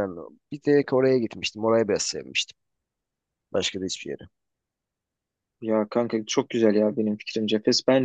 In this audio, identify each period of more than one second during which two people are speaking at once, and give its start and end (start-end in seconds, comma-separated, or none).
none